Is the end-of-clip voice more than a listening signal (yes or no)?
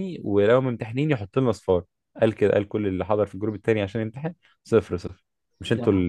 no